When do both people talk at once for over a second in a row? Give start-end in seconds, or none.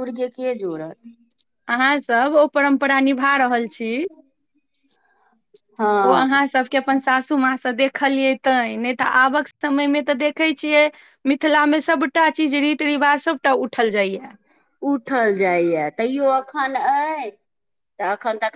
none